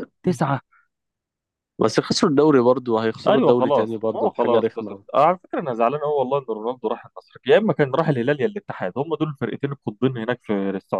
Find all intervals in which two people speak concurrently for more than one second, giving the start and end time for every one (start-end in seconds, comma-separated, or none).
3.3-5.0